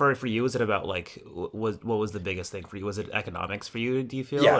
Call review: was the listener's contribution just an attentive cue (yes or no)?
no